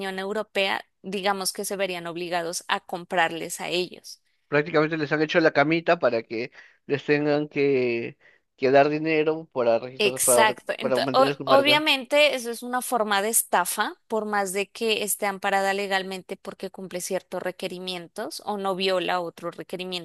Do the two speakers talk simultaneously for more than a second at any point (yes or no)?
yes